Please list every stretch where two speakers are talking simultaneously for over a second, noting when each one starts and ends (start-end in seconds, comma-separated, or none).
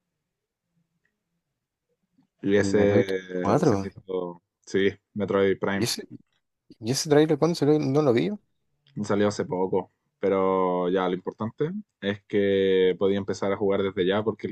2.6-3.9